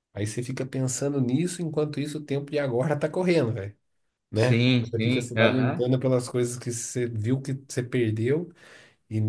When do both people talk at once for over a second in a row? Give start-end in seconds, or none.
4.3-5.9